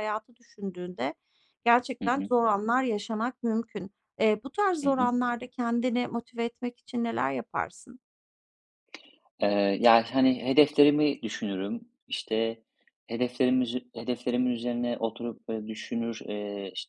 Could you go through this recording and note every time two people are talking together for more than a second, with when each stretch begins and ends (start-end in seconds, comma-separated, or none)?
none